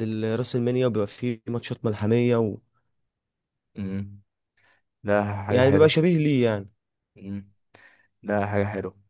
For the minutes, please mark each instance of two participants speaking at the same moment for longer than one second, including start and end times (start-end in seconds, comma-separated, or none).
none